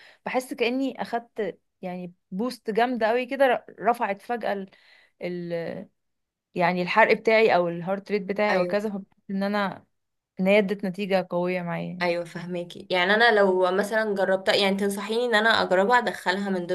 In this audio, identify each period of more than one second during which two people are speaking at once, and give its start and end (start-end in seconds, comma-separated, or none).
none